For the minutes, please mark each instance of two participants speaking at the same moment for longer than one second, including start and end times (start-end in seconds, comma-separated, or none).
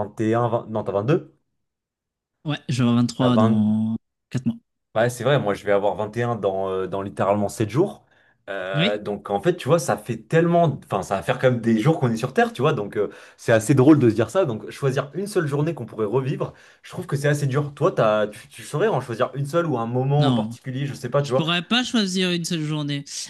none